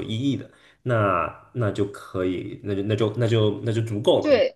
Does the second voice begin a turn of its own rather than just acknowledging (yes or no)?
yes